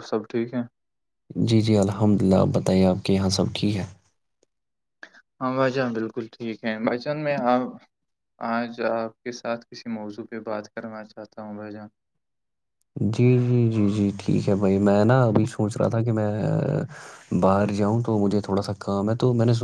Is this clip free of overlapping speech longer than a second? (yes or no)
yes